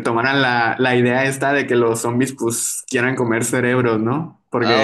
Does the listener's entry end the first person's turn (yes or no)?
no